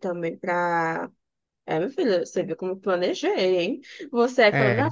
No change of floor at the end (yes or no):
yes